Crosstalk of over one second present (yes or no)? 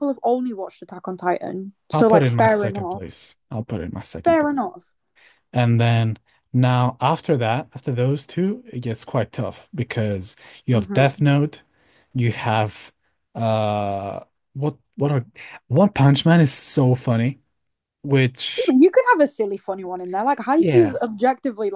yes